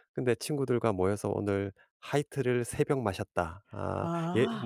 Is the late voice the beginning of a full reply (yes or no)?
no